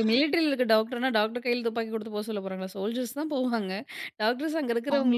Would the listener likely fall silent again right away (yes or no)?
yes